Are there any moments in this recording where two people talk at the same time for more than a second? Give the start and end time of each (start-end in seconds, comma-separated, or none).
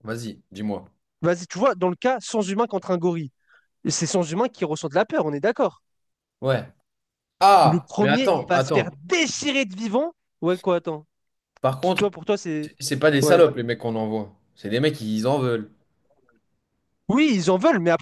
7.6-8.9